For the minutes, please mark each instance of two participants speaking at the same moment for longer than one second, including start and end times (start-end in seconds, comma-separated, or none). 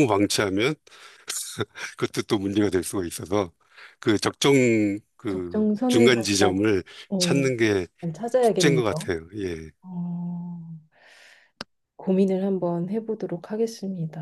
5.3-6.5